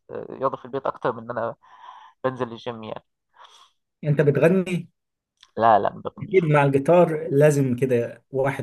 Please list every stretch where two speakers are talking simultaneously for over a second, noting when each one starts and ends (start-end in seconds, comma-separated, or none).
none